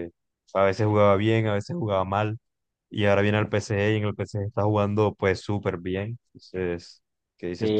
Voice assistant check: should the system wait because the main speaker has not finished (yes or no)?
no